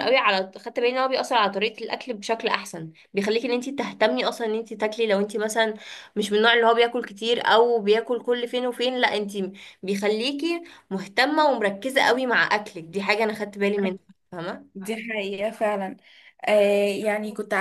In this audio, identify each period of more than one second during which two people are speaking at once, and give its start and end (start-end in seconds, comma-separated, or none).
none